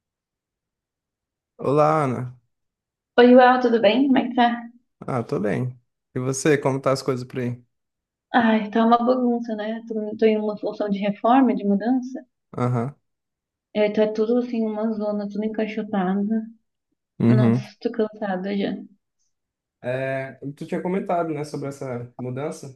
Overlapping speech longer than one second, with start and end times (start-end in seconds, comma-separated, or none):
none